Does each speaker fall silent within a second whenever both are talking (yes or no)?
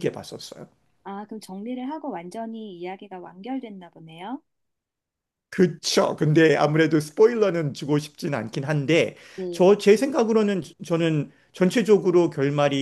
yes